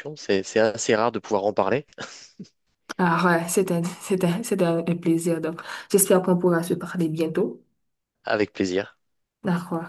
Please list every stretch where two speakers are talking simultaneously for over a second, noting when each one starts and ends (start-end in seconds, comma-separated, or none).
none